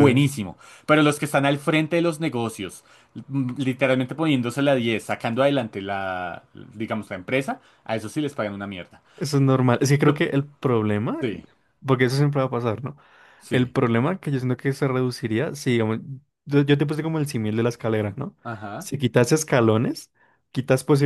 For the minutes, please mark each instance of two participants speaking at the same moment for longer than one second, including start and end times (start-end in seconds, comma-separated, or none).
none